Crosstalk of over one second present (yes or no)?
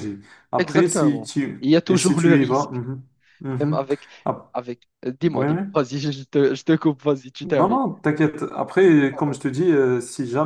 yes